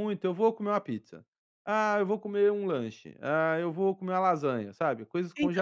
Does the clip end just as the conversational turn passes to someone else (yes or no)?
yes